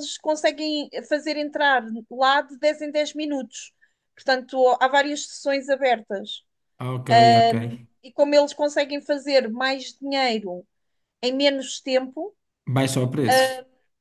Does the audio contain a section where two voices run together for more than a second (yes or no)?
no